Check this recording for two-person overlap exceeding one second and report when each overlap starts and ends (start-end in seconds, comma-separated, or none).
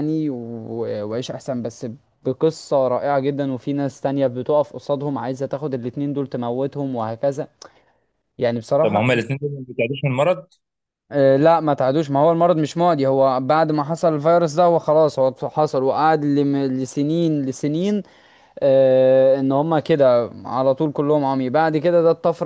none